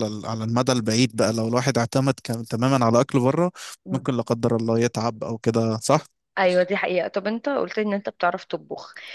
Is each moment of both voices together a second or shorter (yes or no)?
yes